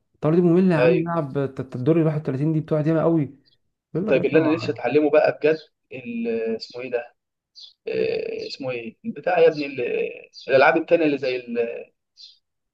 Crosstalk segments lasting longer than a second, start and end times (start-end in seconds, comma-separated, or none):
none